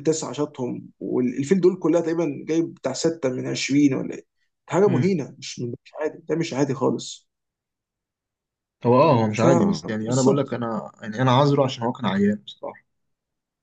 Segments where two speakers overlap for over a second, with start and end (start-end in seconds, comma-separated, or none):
9.4-10.6